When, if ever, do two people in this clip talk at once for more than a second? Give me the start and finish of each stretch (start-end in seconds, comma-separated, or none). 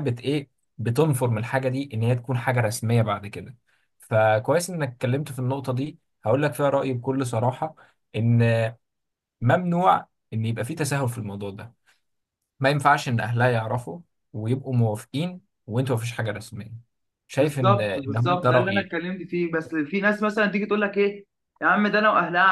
17.4-18.9